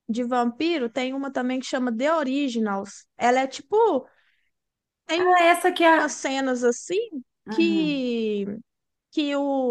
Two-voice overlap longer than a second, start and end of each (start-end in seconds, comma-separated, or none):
none